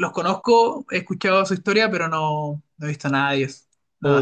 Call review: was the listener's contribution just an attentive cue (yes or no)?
no